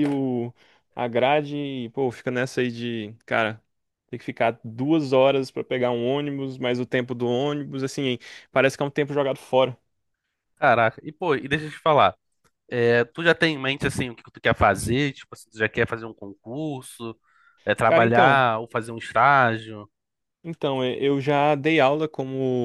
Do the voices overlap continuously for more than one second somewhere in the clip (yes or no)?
no